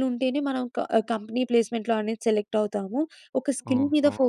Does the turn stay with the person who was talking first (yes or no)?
yes